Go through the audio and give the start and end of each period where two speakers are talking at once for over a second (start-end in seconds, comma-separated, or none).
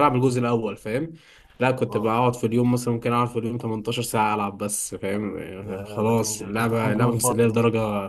5.6-7.6